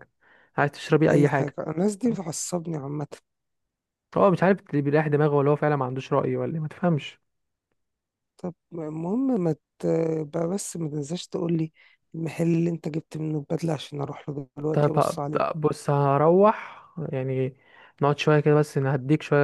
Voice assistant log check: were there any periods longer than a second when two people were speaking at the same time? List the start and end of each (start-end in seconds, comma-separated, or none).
none